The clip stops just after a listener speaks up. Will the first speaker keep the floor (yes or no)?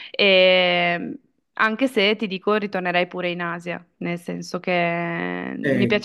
no